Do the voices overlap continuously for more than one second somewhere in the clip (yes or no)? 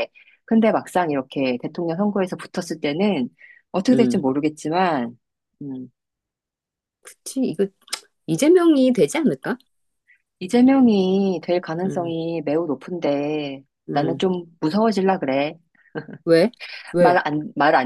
no